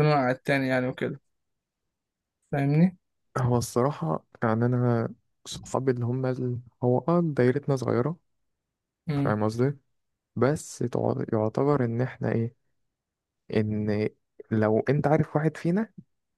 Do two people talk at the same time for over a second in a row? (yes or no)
no